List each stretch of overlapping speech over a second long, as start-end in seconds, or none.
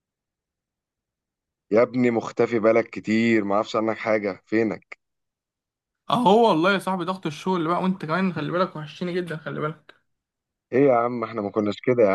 none